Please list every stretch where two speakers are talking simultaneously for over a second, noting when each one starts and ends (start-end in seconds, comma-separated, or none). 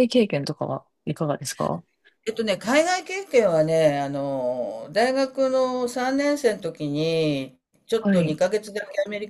none